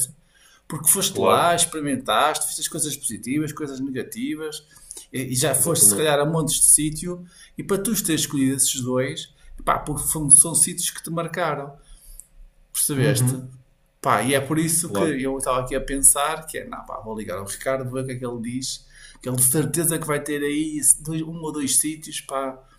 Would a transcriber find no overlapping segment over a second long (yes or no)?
yes